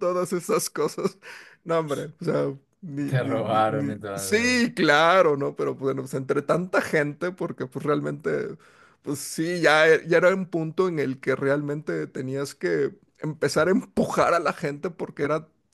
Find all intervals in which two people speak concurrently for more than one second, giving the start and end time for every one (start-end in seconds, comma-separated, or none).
3.0-4.7